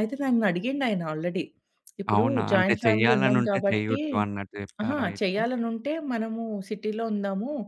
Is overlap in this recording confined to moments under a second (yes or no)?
no